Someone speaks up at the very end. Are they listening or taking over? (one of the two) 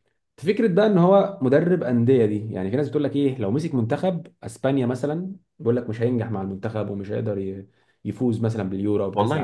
taking over